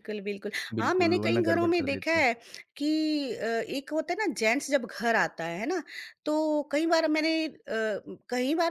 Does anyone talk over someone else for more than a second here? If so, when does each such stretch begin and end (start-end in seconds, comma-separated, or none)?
0.8-2.2